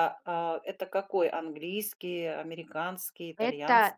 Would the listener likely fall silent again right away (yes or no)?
no